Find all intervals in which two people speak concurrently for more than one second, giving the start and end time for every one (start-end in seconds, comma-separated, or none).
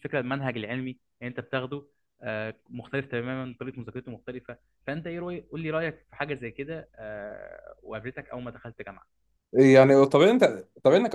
none